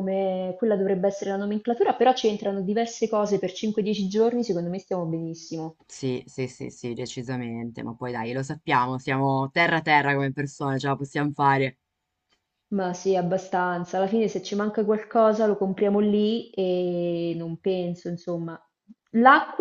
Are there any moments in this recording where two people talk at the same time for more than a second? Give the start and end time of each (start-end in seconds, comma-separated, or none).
none